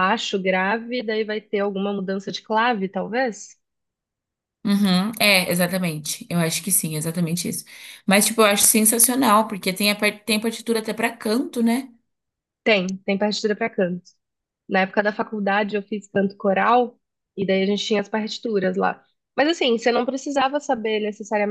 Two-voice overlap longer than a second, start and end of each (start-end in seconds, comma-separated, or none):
none